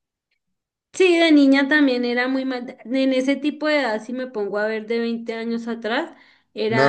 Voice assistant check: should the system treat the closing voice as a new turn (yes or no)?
yes